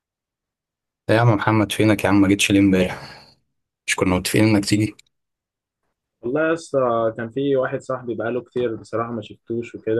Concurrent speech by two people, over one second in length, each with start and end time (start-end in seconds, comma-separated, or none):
none